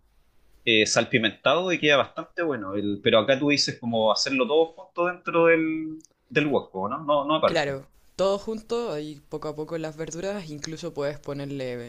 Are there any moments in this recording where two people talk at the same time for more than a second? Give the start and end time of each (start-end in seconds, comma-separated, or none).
none